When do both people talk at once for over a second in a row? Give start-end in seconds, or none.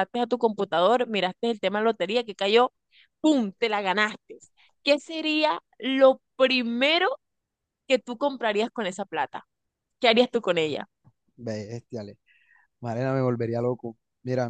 none